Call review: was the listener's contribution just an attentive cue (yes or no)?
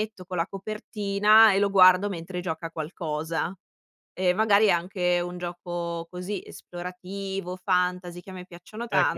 no